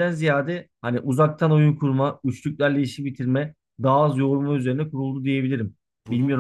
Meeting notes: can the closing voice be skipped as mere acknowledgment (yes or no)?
no